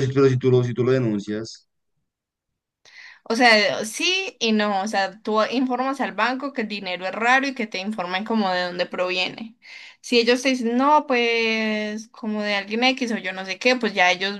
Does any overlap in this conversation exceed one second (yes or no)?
no